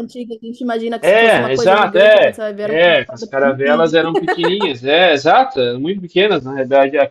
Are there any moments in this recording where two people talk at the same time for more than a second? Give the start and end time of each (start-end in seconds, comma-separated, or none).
1.0-4.0